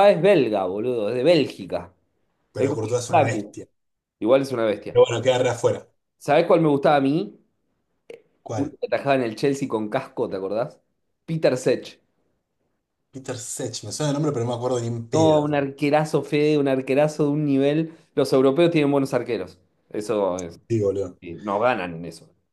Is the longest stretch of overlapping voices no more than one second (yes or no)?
yes